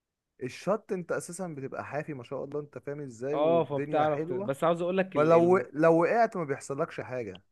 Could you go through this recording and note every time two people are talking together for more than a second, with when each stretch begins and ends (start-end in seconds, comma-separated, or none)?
3.3-4.5